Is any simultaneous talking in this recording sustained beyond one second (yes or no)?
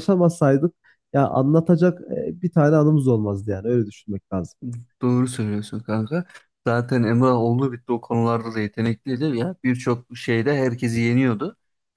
no